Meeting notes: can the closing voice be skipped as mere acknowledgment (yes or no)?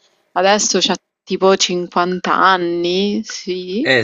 no